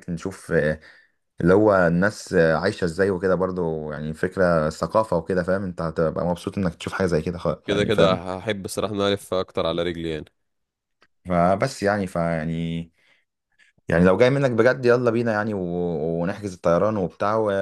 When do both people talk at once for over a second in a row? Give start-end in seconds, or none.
none